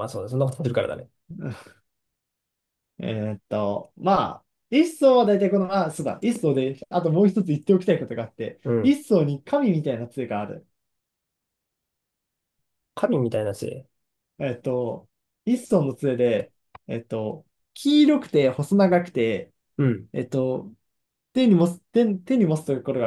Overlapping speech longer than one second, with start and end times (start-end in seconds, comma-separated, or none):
none